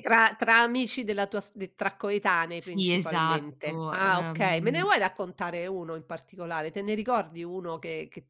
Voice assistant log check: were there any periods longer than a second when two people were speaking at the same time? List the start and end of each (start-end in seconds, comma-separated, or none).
2.6-4.9